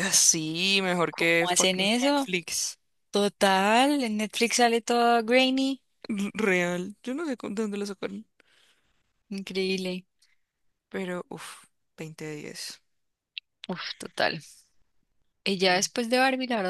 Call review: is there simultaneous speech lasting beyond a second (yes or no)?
yes